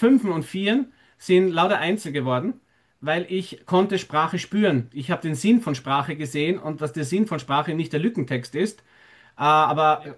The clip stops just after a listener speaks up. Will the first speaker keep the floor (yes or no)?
yes